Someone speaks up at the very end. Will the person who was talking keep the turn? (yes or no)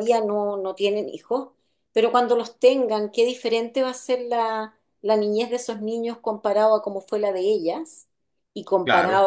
yes